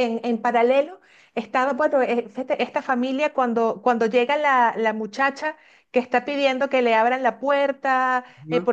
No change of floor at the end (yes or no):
yes